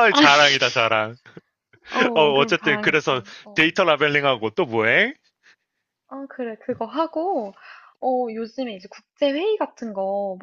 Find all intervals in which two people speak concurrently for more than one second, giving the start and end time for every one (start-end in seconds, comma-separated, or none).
2.1-3.7